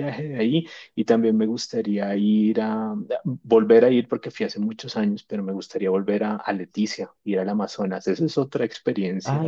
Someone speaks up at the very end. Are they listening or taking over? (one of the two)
taking over